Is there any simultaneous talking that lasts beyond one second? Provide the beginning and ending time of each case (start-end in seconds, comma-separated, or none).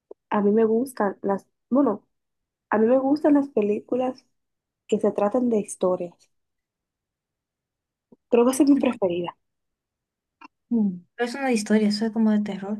none